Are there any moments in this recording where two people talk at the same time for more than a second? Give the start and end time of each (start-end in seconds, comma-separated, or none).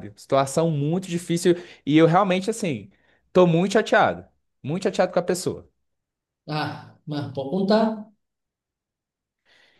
none